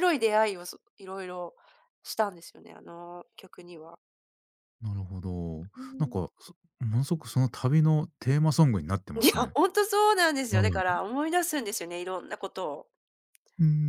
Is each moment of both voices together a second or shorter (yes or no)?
yes